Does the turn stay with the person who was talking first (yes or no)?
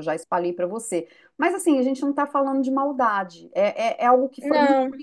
yes